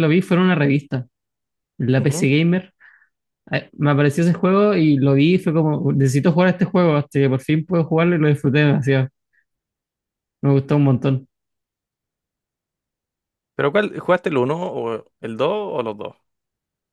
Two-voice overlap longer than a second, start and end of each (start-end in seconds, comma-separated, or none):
none